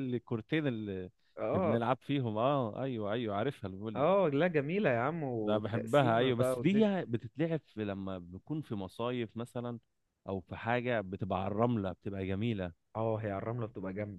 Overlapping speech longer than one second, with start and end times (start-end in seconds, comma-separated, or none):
5.4-6.9